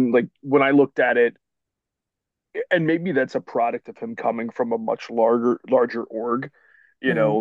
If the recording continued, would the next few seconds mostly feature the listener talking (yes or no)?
no